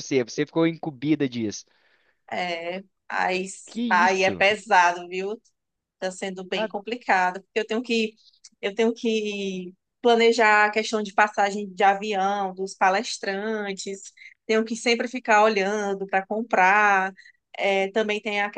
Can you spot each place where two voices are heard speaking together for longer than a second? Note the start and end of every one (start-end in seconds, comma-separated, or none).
none